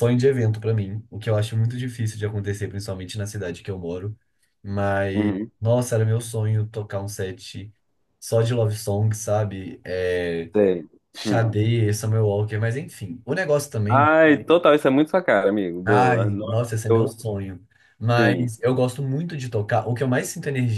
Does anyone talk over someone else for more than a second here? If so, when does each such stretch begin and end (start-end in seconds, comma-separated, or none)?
15.8-17.3